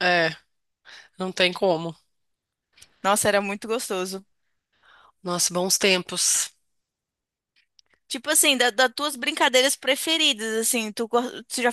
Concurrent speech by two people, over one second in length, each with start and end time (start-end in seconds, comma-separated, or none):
none